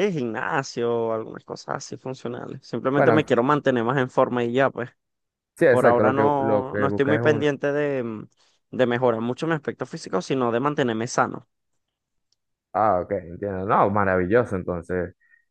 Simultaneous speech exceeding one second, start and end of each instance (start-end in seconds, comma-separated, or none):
5.7-7.5